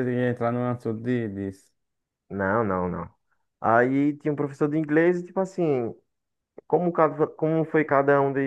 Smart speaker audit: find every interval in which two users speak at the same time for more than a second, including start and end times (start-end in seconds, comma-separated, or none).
none